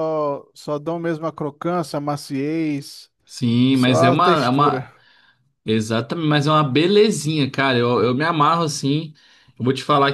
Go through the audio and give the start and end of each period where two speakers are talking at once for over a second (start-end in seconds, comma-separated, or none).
3.7-4.9